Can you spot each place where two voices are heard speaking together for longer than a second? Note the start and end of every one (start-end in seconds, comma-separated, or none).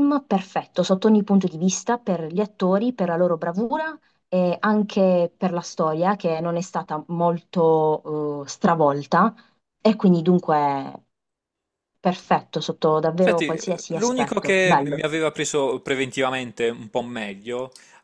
13.2-15.0